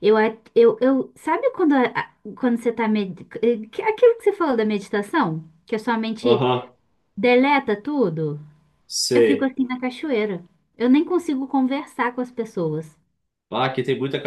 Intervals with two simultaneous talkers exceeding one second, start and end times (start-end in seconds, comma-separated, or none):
none